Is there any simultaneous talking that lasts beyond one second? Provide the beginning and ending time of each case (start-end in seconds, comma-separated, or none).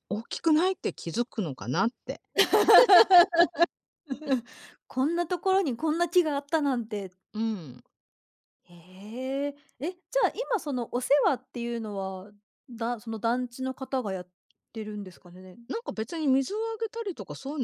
none